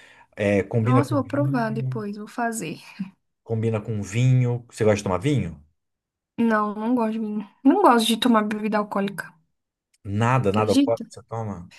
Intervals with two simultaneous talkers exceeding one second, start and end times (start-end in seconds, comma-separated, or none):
0.8-2.0